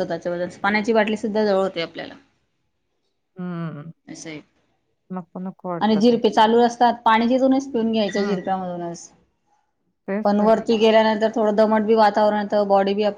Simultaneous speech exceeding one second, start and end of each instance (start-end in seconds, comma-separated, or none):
none